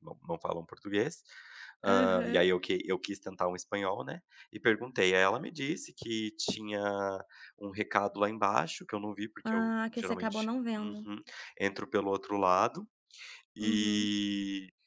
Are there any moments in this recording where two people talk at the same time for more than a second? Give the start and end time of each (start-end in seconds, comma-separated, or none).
9.4-11.1